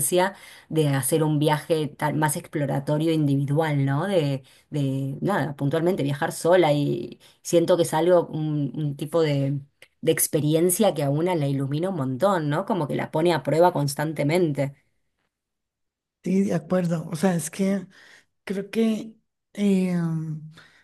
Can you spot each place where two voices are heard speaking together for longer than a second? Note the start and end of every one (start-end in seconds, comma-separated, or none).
none